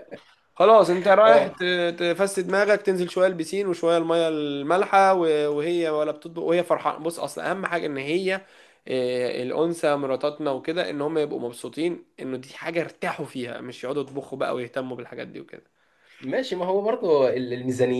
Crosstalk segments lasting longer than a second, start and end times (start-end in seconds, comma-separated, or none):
none